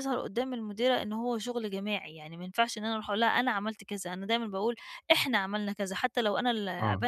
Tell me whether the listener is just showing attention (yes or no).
yes